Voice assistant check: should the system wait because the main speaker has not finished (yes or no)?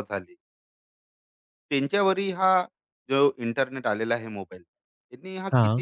yes